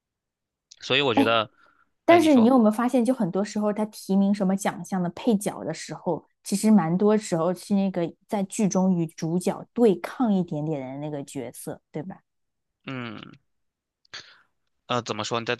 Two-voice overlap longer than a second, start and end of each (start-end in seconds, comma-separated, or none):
none